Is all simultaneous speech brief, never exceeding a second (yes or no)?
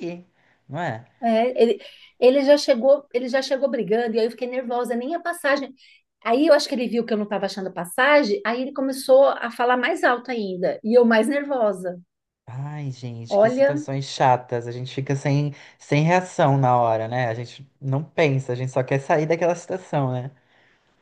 yes